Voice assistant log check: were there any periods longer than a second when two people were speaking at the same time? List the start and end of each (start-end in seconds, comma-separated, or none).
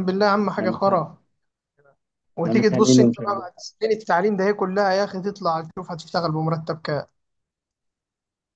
2.4-3.6